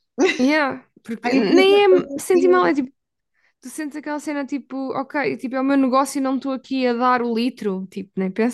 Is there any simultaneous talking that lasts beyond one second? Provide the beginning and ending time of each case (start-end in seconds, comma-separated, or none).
1.2-2.7